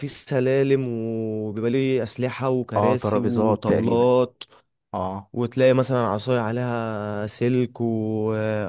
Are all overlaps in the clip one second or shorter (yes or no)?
no